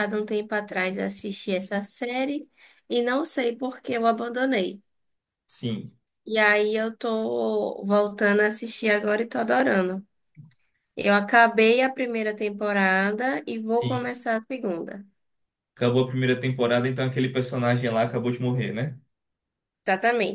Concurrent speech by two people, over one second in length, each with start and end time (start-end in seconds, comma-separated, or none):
none